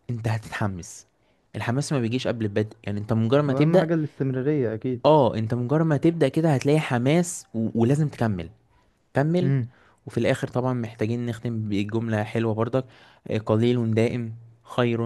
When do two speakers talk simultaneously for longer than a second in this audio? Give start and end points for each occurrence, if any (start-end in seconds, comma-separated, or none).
none